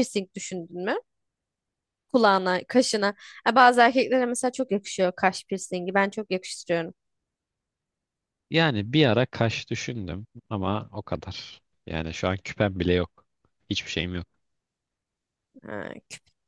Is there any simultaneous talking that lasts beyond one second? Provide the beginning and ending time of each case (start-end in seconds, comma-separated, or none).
none